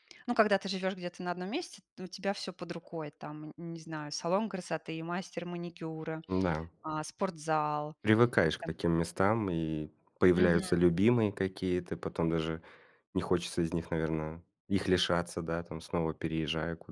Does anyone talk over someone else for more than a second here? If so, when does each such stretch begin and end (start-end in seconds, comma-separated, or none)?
none